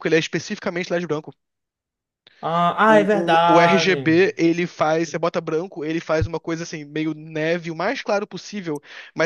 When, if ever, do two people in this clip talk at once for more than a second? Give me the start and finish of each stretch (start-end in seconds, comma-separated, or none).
2.9-4.2